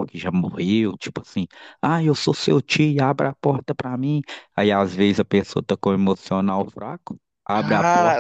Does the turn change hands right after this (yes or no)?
yes